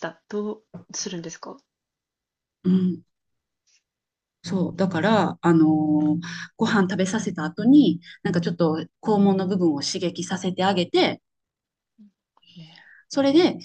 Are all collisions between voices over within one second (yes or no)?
yes